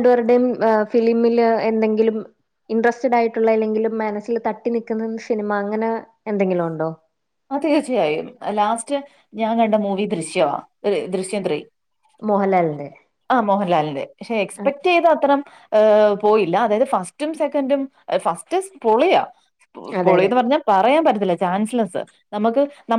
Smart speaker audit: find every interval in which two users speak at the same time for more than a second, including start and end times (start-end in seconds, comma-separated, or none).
none